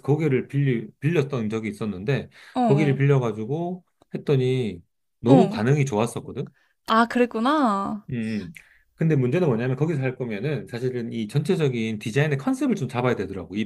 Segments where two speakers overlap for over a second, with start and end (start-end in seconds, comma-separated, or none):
none